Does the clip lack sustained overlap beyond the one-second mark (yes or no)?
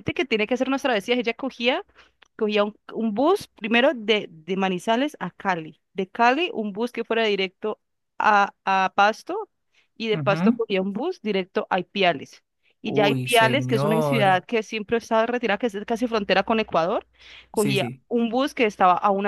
no